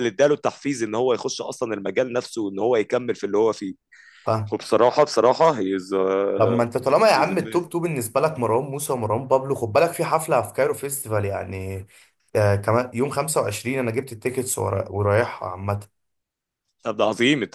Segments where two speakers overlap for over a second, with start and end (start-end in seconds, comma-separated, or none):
none